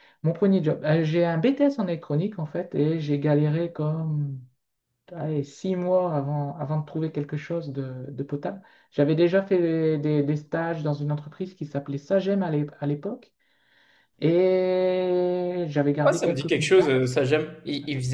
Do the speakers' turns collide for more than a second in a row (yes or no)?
yes